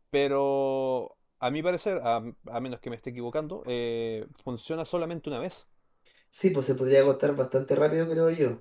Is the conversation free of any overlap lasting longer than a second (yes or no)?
yes